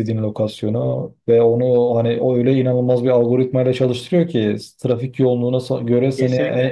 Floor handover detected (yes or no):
no